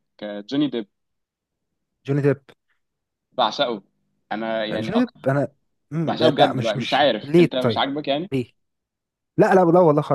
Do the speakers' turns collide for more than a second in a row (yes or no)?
yes